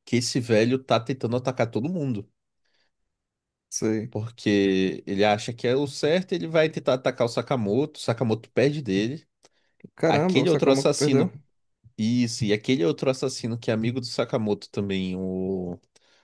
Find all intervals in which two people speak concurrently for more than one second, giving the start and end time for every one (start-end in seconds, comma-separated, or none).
10.0-11.3